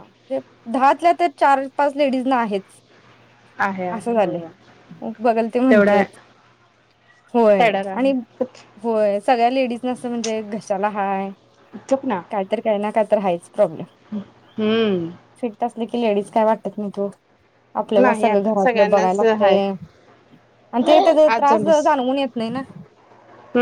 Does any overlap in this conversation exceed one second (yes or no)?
yes